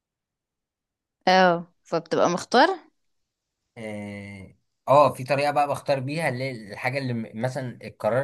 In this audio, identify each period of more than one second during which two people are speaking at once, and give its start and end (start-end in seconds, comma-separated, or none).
none